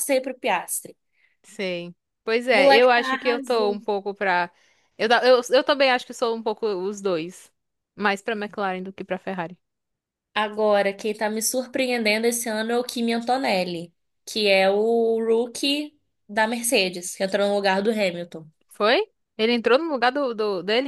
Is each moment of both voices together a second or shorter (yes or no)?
no